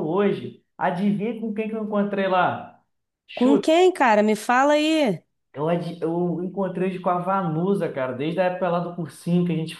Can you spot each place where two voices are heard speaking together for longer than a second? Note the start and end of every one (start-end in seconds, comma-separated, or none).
none